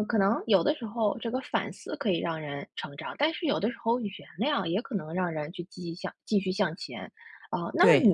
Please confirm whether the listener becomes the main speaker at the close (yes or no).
no